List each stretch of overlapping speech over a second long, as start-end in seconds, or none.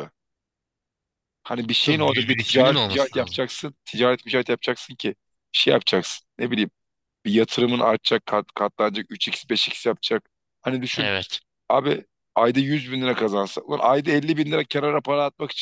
1.8-3.4